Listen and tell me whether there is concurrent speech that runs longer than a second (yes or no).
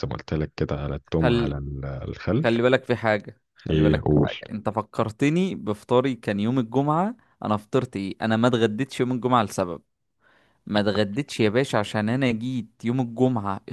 no